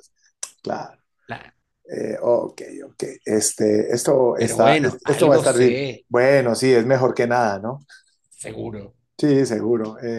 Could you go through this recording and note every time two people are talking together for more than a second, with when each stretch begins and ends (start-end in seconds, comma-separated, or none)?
4.3-6.1